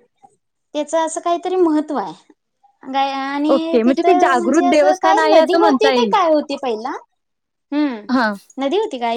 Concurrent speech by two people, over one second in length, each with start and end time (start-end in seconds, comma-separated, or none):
3.5-6.1